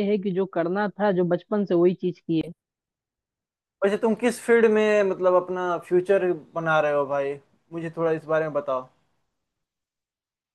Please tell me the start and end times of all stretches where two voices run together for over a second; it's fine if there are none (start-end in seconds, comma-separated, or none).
none